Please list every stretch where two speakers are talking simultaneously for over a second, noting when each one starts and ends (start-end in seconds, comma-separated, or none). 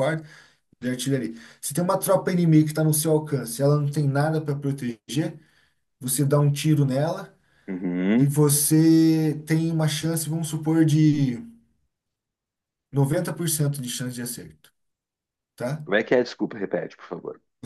none